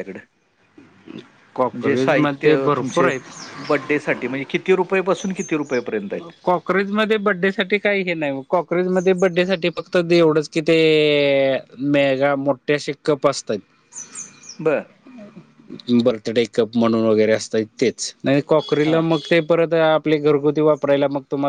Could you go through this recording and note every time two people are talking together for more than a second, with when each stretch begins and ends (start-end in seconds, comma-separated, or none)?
1.7-3.1